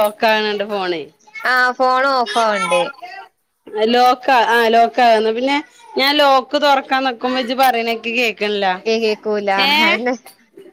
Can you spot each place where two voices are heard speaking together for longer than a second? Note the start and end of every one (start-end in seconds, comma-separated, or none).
none